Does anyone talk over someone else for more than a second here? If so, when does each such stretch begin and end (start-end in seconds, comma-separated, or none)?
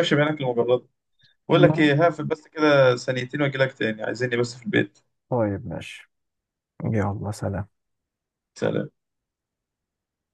none